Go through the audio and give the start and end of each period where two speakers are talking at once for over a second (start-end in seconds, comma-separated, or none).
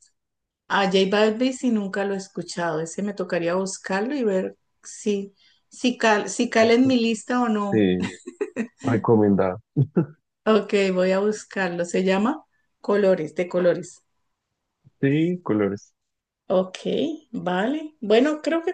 none